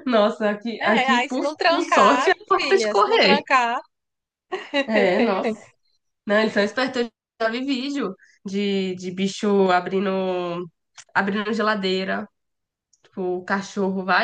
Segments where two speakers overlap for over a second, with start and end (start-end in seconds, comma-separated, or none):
0.8-3.4